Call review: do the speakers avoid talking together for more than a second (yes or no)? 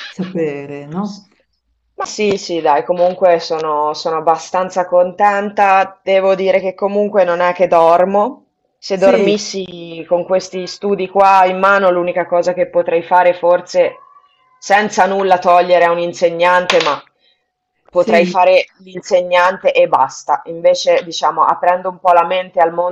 yes